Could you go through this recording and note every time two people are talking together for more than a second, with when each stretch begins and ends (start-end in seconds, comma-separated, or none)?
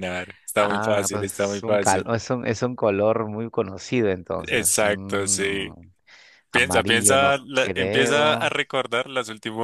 0.6-2.1, 4.5-5.7, 6.5-8.5